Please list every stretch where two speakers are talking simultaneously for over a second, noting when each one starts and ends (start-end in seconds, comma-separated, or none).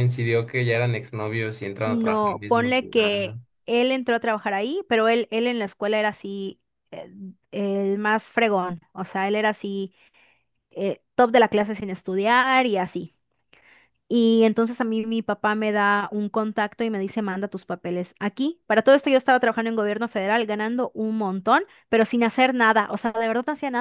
1.8-3.1